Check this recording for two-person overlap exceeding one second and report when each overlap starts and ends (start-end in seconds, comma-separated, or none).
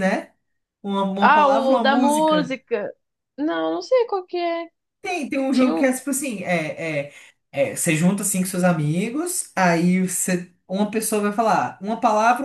1.2-2.6